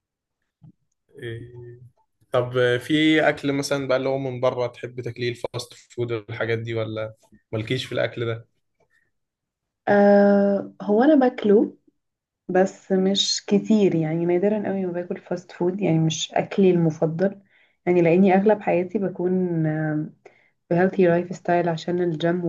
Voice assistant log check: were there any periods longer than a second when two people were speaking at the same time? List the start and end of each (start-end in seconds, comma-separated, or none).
none